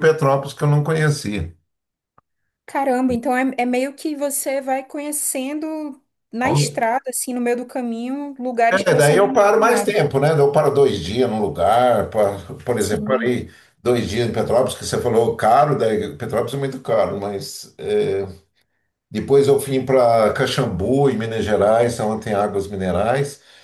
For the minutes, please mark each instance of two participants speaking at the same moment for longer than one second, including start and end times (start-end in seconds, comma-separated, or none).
8.7-9.9